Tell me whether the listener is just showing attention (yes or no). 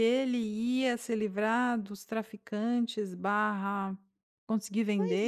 no